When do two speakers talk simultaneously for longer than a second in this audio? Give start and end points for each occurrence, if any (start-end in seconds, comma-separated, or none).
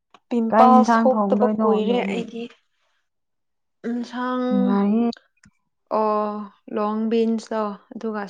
0.5-2.2